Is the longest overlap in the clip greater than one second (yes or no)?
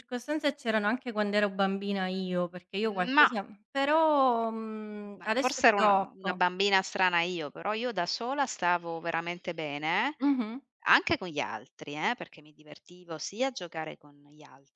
yes